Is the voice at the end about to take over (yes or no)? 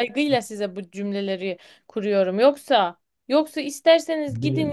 no